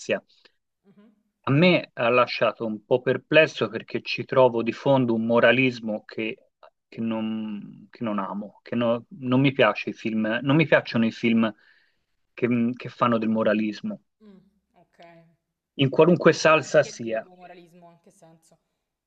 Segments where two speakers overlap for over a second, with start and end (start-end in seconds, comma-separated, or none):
16.0-17.3